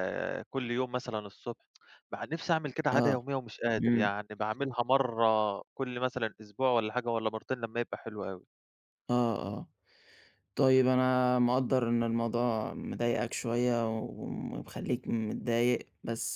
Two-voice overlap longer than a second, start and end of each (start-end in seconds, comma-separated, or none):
none